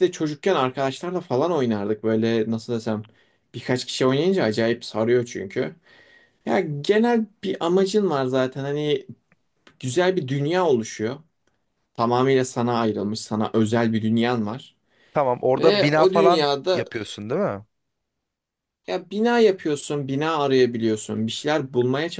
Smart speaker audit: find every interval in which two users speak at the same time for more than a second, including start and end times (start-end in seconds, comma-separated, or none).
15.6-16.9